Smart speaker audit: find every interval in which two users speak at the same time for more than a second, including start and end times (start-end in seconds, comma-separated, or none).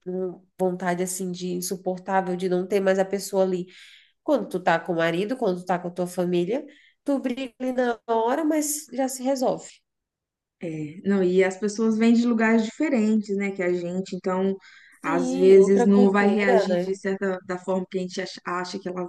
15.0-17.0